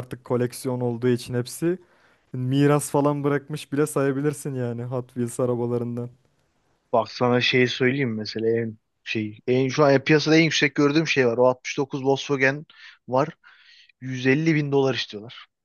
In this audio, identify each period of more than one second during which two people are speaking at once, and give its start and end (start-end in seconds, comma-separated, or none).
none